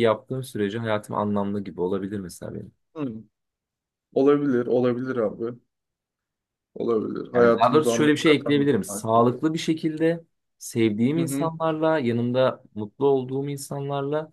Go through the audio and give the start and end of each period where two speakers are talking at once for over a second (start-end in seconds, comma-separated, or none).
7.3-9.1